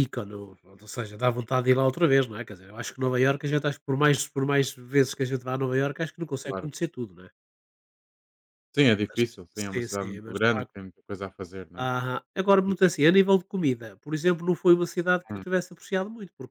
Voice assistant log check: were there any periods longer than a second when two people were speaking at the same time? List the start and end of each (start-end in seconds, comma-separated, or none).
9.1-10.7